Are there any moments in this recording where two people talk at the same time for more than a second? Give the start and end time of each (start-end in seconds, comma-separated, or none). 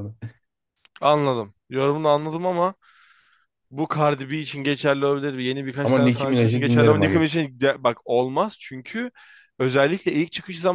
5.8-7.3